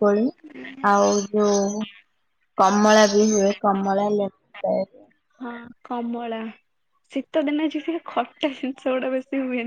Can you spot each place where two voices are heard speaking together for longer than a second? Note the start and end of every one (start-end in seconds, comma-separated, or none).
none